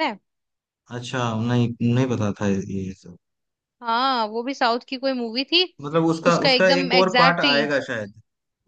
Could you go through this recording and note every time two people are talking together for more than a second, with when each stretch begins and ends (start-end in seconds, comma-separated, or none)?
6.3-7.6